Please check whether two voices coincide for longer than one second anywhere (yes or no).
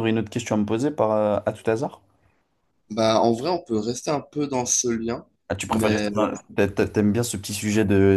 no